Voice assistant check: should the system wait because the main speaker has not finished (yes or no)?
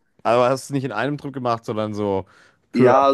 no